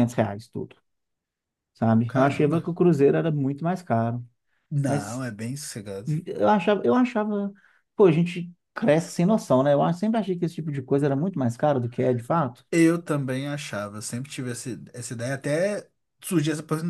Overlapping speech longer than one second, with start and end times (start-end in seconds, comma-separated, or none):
none